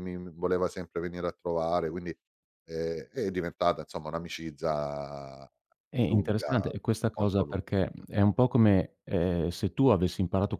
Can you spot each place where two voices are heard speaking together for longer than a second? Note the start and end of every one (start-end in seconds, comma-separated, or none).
none